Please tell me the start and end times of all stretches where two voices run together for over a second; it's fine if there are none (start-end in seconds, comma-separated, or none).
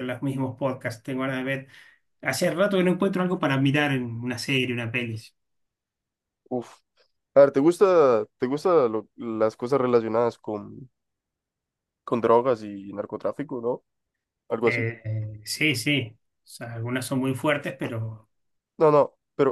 none